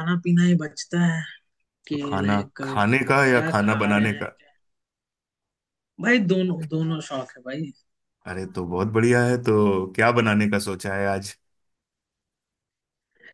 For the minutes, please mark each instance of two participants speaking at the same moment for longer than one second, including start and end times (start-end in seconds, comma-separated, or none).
1.9-4.4